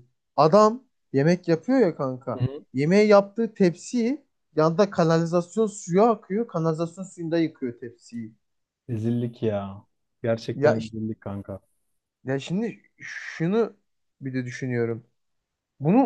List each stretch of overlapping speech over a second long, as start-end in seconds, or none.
none